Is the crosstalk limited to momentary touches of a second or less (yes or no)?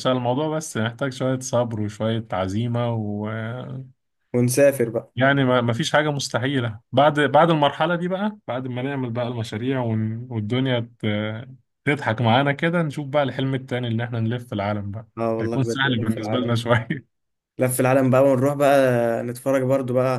no